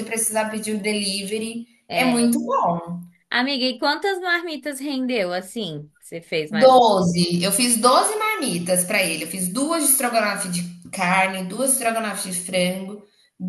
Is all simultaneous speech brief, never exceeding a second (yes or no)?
yes